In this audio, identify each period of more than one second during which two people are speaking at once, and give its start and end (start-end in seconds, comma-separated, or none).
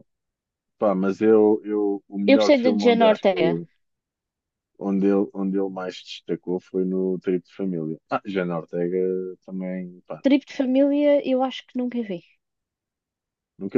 2.3-3.6